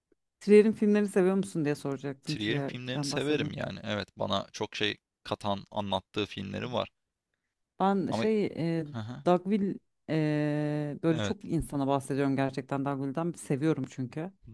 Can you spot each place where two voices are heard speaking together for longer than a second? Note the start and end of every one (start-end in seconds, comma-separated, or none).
2.2-3.5